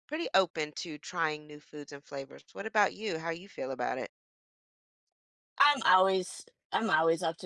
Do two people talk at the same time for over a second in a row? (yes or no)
no